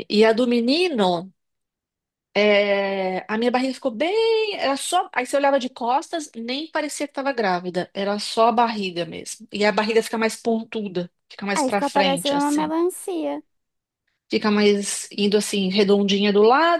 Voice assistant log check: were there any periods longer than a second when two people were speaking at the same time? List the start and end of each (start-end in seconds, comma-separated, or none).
11.5-12.7